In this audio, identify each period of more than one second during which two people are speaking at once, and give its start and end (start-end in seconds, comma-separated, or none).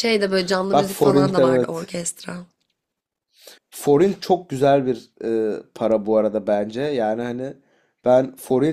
0.7-1.9